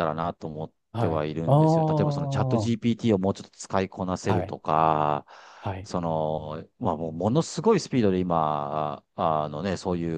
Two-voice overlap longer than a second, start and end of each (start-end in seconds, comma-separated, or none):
0.9-2.7